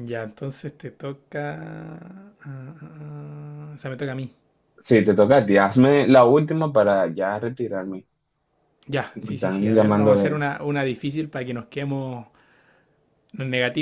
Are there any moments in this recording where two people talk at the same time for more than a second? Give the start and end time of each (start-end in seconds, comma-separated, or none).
9.1-10.4